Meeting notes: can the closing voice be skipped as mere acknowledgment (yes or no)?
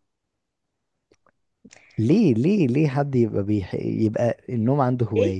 no